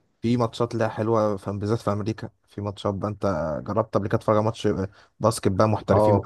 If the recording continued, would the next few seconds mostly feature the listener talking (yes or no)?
yes